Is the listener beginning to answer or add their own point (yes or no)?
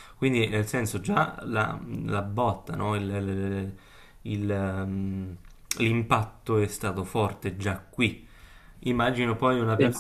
no